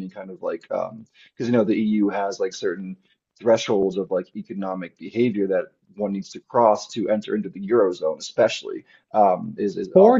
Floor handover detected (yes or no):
yes